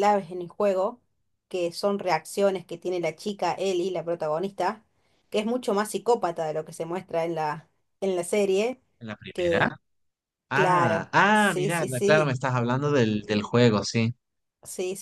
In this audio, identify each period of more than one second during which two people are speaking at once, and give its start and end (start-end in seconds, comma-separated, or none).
10.5-12.3